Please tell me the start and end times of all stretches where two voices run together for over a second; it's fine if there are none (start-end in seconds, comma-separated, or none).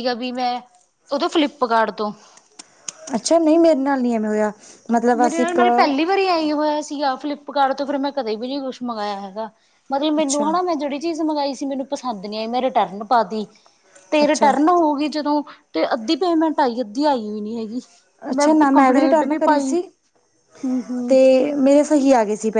none